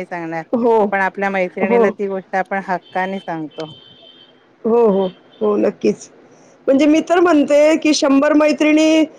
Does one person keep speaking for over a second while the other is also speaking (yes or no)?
no